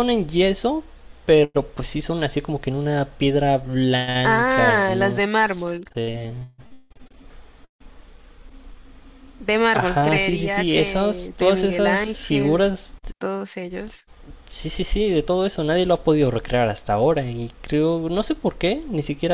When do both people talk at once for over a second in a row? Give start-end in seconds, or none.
4.2-5.8, 9.7-12.7